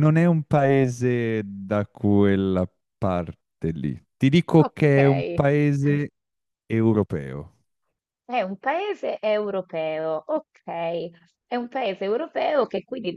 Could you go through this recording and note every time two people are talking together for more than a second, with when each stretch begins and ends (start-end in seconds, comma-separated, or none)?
none